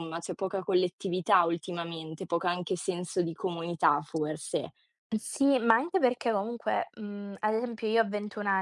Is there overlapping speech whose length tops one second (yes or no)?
no